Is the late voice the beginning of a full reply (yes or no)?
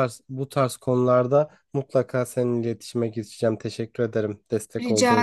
yes